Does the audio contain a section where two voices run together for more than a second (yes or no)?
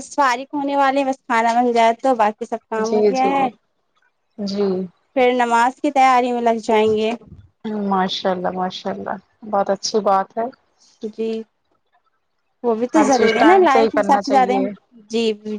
yes